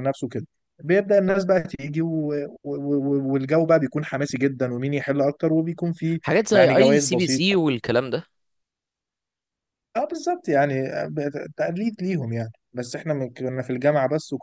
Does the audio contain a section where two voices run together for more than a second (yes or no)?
yes